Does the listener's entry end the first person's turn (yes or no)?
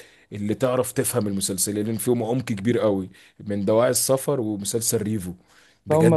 yes